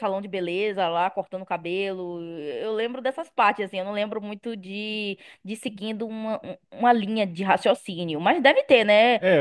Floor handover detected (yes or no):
yes